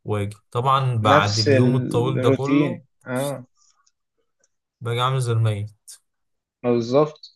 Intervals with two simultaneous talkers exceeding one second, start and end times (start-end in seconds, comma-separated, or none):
1.0-2.8